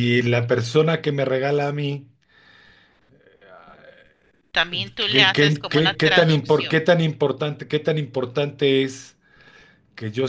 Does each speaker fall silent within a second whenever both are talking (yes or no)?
no